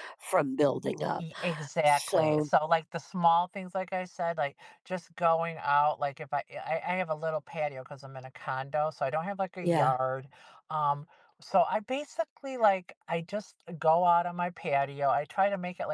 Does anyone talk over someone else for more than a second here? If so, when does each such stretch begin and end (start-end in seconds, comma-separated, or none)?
none